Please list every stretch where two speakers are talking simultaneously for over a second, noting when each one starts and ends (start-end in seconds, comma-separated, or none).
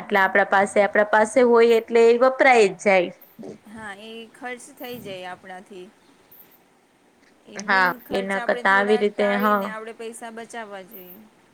7.7-9.6